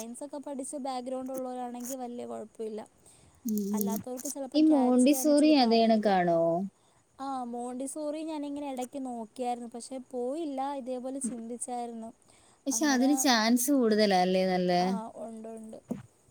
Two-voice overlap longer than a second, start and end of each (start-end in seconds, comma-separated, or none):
4.6-6.2